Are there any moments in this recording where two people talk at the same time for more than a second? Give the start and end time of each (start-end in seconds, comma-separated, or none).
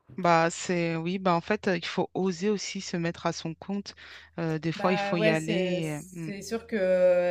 4.8-6.0